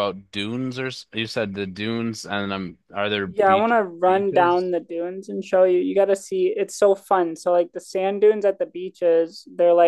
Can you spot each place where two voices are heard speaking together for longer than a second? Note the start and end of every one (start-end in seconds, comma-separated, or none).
3.3-4.7